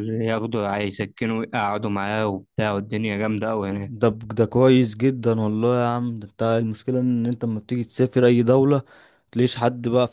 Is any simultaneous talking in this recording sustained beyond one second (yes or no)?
no